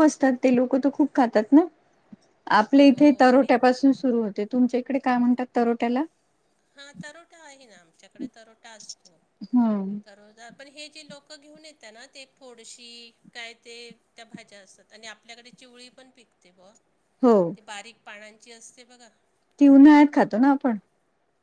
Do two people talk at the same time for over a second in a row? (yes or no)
no